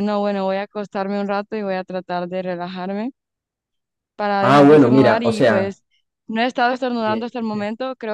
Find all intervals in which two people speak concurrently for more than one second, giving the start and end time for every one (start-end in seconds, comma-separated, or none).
4.4-5.8